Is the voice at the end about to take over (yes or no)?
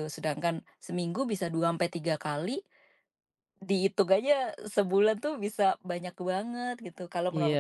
yes